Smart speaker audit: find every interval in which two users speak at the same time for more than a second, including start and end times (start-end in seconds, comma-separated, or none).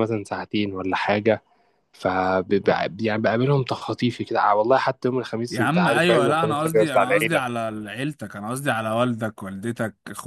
5.5-7.4